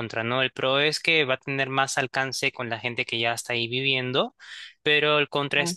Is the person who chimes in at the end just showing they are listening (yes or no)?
yes